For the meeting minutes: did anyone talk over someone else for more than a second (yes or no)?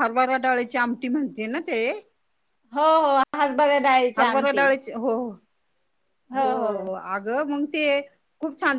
no